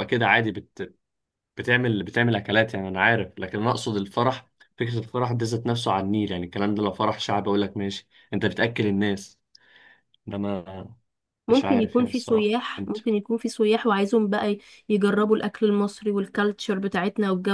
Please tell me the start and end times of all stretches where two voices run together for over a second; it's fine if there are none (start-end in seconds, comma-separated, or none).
11.5-13.0